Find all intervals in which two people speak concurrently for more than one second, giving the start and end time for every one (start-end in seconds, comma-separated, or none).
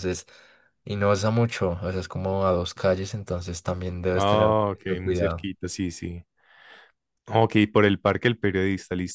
4.1-5.5